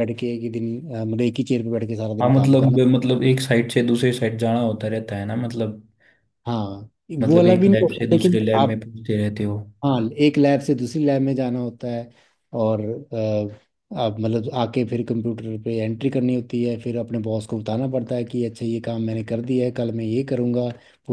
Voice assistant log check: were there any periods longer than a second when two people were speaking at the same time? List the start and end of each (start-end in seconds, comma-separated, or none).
7.3-8.8